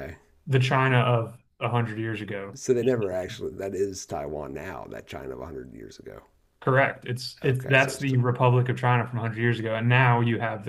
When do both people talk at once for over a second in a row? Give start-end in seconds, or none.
none